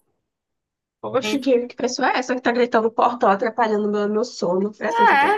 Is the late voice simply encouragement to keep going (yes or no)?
no